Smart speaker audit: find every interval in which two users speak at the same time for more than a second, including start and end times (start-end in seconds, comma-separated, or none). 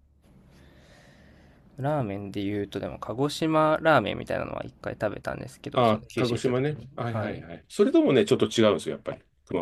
5.7-7.4